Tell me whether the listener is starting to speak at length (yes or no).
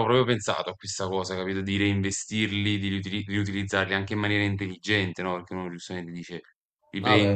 yes